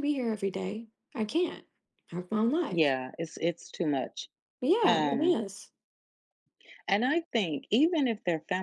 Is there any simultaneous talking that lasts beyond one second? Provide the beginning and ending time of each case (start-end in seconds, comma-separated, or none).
none